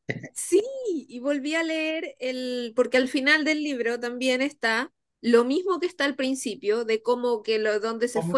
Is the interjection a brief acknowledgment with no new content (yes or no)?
yes